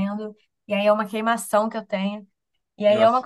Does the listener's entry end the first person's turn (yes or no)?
no